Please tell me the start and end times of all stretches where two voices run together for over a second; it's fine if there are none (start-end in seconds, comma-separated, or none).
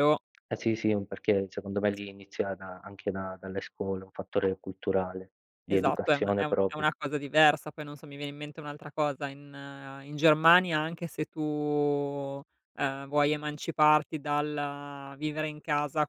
5.7-6.9